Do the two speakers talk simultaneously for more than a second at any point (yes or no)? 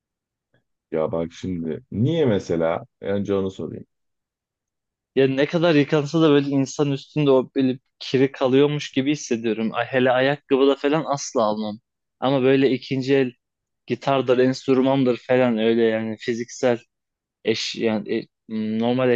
no